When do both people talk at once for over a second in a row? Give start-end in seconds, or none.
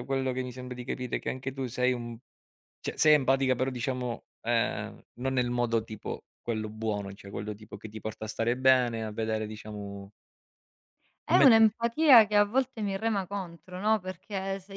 none